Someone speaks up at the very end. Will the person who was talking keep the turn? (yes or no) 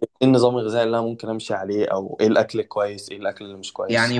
no